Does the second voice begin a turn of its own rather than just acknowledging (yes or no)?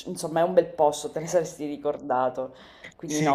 yes